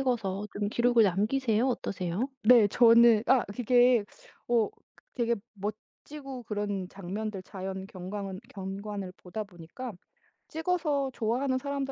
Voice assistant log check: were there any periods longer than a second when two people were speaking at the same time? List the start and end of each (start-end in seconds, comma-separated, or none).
none